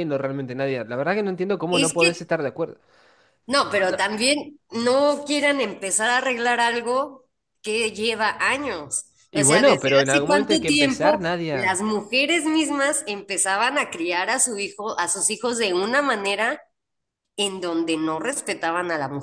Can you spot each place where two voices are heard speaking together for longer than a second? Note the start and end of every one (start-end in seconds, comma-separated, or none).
9.3-11.8